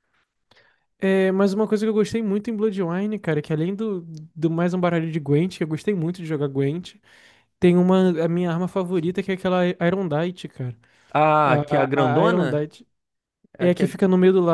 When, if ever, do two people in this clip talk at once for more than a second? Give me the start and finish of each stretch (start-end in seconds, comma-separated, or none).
11.4-12.7